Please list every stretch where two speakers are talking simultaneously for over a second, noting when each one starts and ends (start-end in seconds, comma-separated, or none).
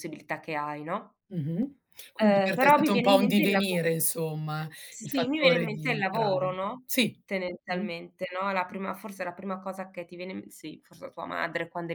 2.2-3.8, 4.9-6.9